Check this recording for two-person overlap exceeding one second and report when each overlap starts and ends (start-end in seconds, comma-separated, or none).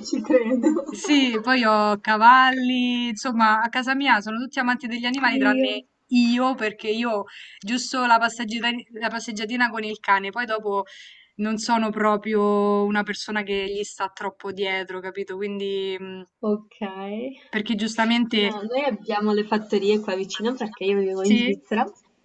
none